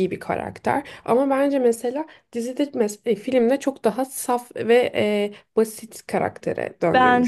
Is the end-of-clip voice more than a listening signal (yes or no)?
yes